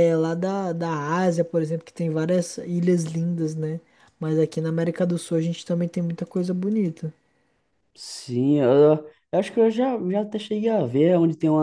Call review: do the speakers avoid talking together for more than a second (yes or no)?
yes